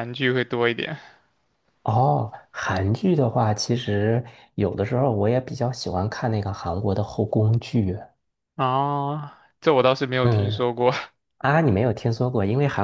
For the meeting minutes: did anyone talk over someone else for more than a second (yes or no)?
no